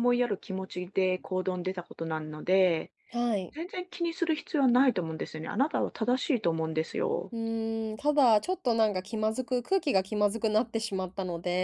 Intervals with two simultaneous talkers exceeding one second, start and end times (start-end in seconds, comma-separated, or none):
none